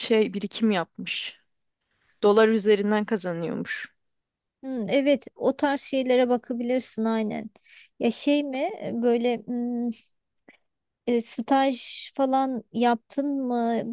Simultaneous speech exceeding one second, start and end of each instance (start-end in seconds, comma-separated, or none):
none